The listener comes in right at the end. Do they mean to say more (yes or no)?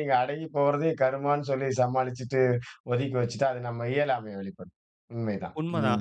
yes